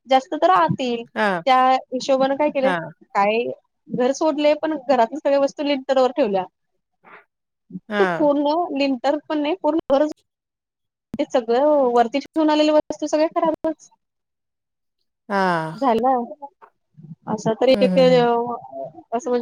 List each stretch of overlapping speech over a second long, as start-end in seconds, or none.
none